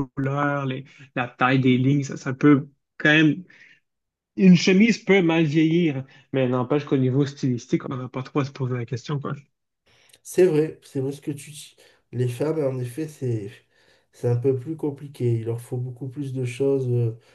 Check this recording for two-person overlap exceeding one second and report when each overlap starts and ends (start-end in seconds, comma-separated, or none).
none